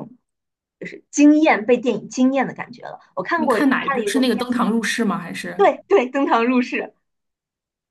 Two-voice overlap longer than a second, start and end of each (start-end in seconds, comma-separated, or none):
3.3-4.6